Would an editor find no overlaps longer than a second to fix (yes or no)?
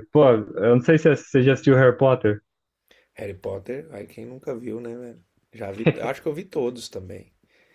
yes